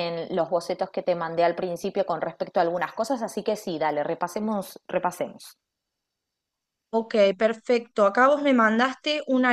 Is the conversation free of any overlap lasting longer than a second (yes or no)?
yes